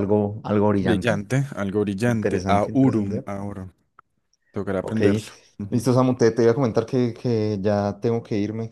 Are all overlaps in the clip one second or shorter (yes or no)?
no